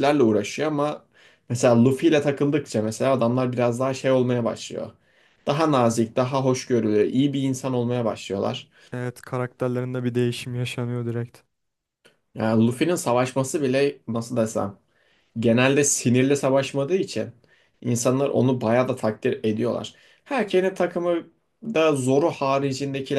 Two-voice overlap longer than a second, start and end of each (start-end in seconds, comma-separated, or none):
none